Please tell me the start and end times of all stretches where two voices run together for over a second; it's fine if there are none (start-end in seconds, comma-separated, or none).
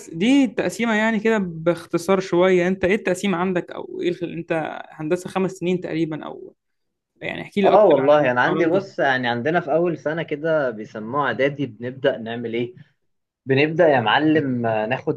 7.7-8.9